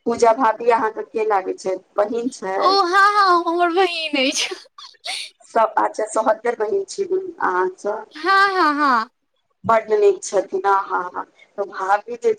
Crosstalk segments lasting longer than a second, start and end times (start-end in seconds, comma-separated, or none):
none